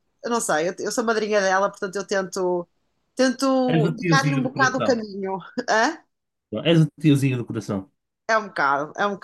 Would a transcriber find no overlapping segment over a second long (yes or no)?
no